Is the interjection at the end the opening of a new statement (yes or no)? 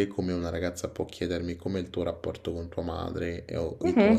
yes